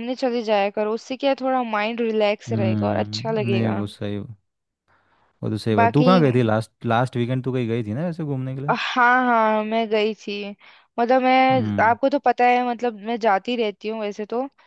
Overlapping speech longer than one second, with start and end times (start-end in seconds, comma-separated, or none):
2.5-3.8